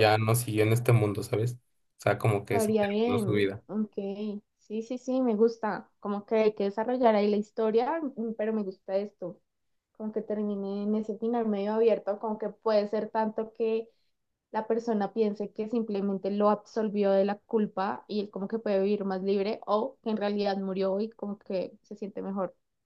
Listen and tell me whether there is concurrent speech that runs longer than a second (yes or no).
yes